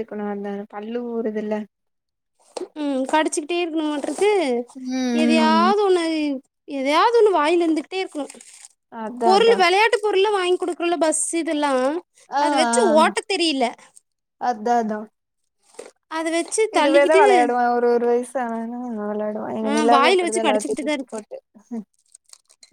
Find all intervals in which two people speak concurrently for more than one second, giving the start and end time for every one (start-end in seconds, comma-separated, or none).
19.7-21.2